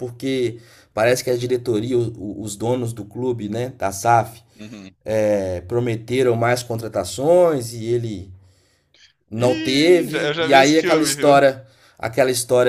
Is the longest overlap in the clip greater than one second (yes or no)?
yes